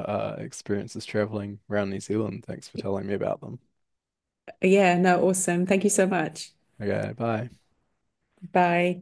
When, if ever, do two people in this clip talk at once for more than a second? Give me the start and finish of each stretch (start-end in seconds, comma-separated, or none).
none